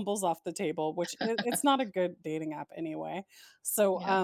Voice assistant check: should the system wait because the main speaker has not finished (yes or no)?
yes